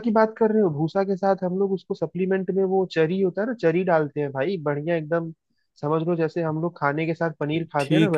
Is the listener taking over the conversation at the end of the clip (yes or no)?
yes